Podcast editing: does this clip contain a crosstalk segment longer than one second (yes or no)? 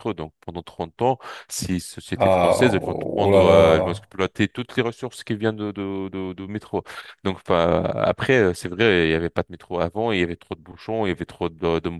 yes